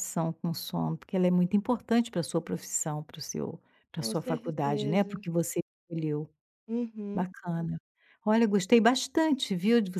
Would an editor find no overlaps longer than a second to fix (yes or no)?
no